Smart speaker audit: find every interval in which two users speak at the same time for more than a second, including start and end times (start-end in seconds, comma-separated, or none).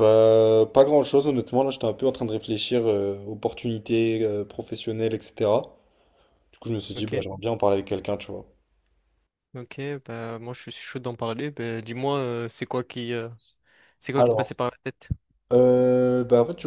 none